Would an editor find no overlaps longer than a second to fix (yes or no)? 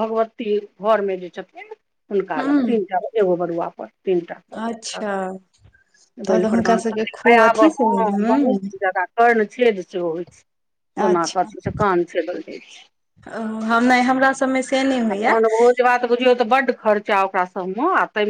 no